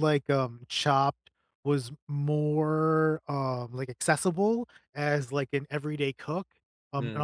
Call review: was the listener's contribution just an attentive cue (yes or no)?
yes